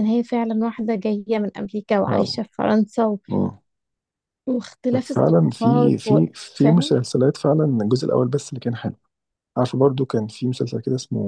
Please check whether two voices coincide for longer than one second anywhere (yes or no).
yes